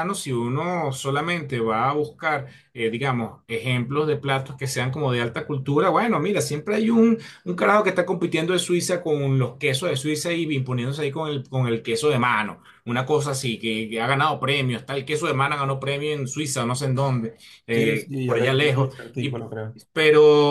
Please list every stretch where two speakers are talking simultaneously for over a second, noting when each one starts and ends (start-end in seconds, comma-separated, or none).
17.7-19.4